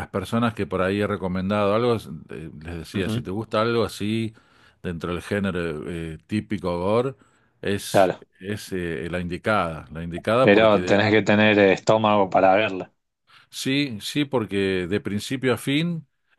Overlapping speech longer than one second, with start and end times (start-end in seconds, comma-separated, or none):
none